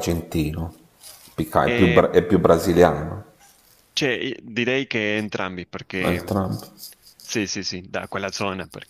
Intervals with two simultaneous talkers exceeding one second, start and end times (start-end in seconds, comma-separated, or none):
none